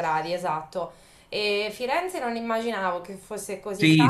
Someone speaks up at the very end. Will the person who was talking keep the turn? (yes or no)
no